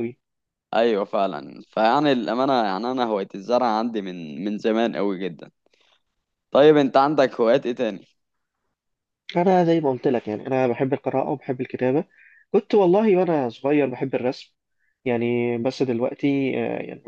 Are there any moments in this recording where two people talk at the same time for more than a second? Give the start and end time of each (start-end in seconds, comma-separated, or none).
none